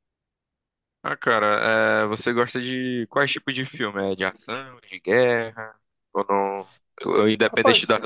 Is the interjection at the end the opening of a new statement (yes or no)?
no